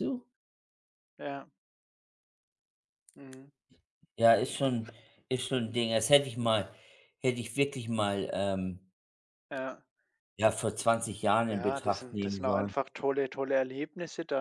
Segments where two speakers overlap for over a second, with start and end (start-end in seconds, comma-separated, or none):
11.5-12.7